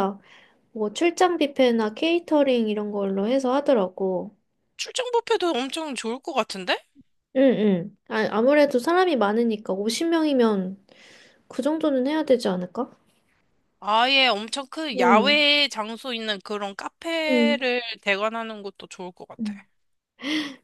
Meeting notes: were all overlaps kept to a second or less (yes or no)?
yes